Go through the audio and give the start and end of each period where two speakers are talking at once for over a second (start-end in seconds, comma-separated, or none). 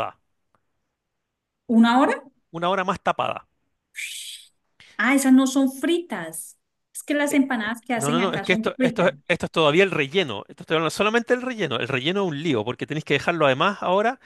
7.3-9.1